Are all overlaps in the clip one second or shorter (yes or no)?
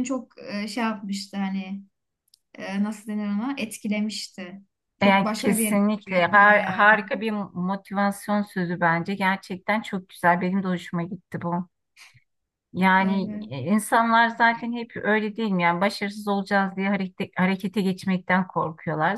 no